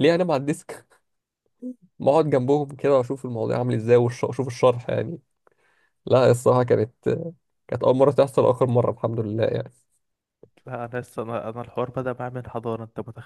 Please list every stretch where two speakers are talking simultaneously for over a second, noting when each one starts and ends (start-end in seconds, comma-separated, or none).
none